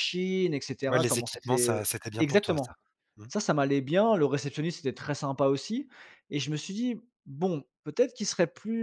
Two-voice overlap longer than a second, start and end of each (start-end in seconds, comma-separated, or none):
0.9-2.7